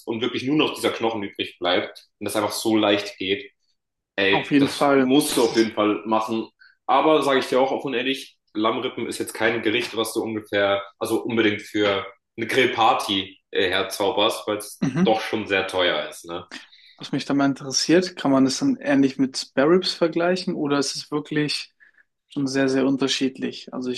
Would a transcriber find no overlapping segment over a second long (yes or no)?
no